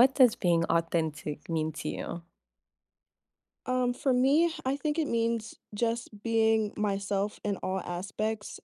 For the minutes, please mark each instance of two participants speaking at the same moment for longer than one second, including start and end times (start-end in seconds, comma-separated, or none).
none